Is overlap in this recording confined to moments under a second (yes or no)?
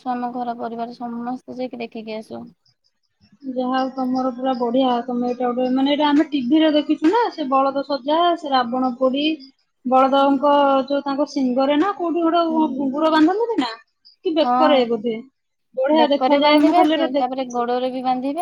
no